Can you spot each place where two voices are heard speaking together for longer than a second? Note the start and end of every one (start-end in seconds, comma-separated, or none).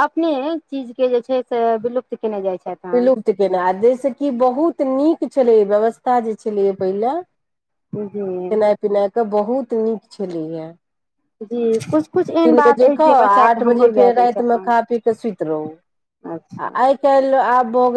12.5-14.7